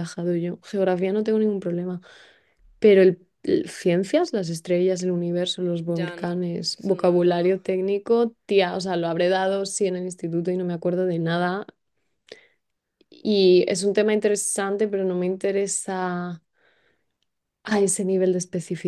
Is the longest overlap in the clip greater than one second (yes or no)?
yes